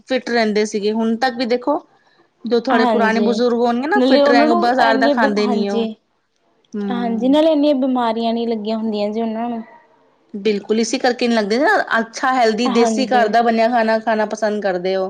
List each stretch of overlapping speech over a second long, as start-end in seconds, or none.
4.0-5.9